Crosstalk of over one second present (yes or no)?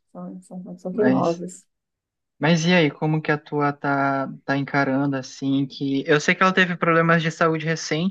no